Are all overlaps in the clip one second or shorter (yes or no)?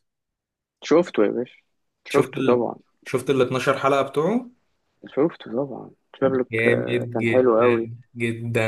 no